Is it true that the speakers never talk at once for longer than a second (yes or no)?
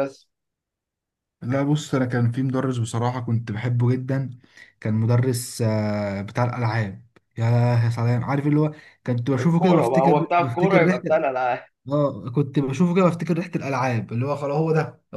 no